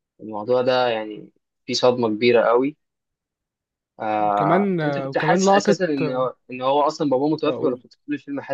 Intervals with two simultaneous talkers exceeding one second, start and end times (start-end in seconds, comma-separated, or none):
4.3-6.3